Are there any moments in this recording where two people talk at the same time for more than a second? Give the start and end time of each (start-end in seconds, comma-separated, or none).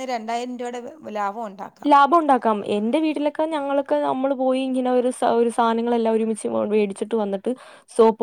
none